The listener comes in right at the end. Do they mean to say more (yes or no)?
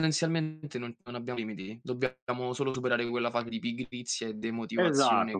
yes